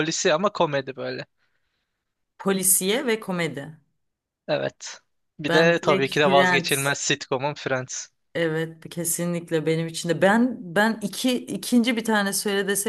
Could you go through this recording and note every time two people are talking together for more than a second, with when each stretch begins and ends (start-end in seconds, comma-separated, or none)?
5.5-7.0